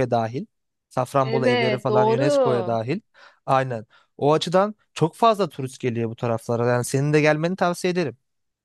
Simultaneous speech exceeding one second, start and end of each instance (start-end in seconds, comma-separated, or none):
1.2-2.8